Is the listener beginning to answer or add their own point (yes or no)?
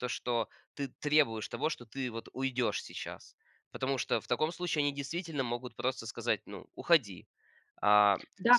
yes